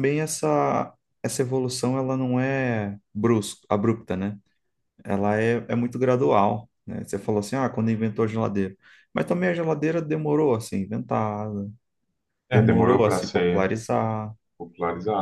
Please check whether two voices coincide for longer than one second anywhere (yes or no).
yes